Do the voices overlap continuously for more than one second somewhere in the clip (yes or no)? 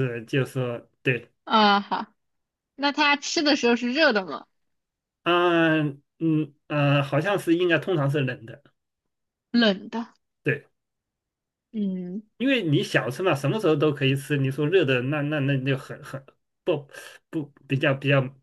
no